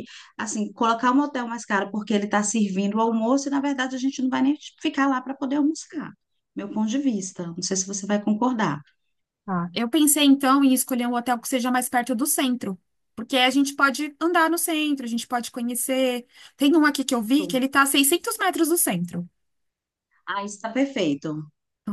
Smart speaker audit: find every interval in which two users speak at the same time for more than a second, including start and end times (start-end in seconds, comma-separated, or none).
none